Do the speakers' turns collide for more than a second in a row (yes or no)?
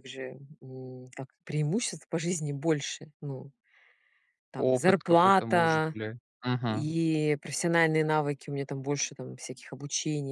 yes